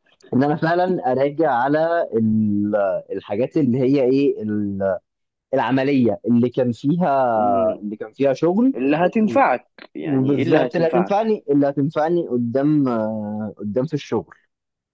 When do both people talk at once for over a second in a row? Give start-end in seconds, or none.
10.0-11.3